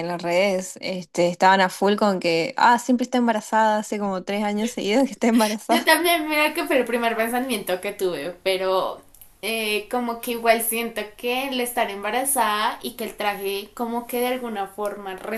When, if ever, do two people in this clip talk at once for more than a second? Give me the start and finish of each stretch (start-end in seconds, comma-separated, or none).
none